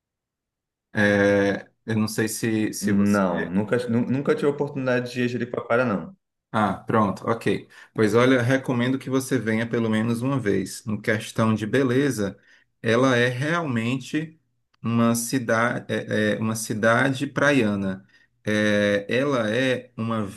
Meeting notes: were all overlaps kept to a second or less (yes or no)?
yes